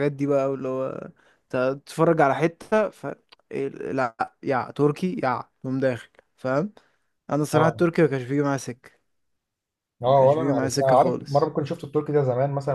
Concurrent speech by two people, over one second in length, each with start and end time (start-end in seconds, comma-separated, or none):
10.1-11.5